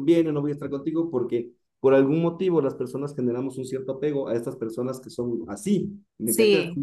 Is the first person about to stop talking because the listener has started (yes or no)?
no